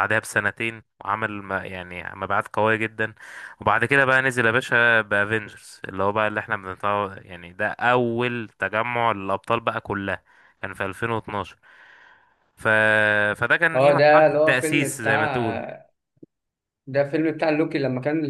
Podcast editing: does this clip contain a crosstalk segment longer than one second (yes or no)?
yes